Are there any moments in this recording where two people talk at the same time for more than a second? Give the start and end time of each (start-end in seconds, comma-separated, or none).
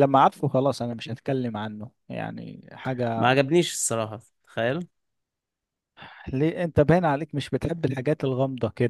none